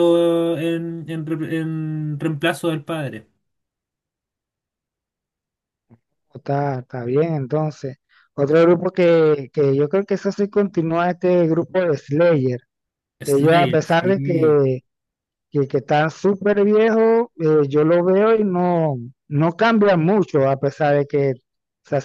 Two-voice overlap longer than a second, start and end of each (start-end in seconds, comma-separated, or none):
13.2-14.6